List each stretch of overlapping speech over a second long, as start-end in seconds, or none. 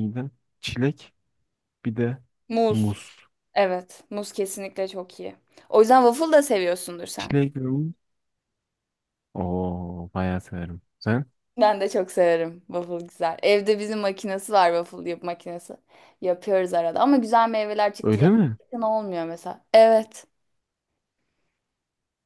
none